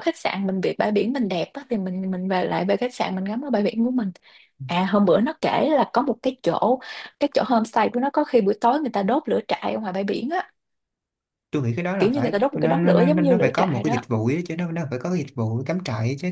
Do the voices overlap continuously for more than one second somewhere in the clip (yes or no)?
yes